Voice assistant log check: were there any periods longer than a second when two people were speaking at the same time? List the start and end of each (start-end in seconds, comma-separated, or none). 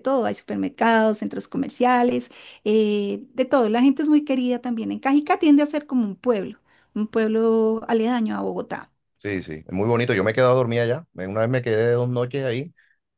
none